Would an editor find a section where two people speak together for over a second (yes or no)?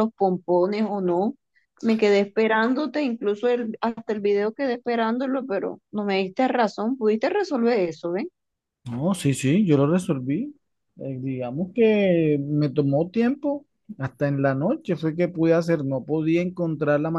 no